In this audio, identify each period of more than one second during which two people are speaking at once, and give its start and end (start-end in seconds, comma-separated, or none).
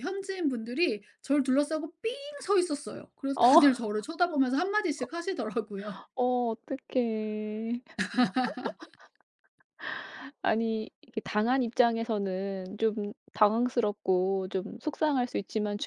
none